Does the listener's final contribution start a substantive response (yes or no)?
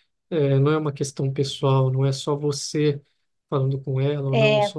no